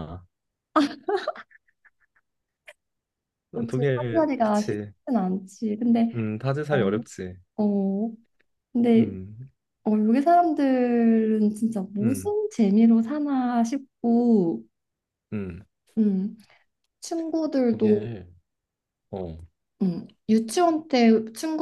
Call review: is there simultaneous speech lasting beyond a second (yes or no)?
yes